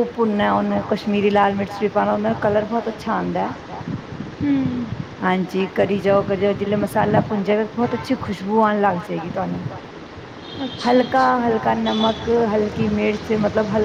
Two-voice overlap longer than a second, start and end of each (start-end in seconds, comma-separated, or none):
1.2-2.6